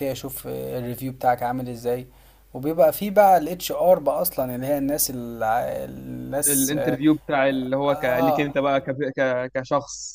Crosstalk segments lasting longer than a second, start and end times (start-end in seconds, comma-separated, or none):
none